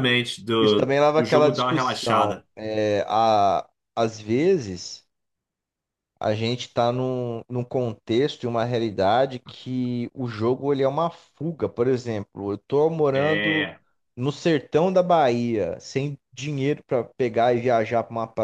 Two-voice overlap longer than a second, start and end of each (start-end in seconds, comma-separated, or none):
0.6-2.5